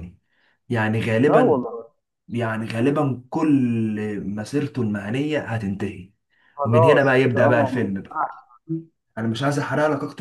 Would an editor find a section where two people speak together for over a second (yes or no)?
yes